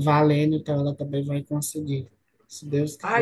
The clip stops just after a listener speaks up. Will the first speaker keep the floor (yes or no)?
no